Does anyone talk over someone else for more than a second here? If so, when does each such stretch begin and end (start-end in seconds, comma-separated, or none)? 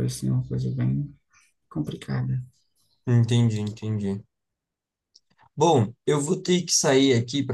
none